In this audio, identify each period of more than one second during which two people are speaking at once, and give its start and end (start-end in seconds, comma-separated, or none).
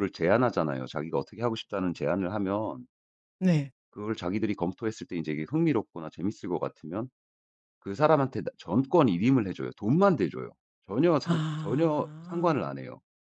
11.2-12.7